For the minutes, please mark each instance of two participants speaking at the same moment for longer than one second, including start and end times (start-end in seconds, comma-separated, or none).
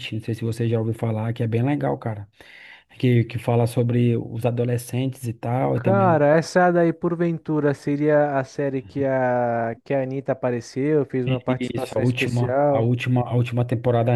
11.7-12.9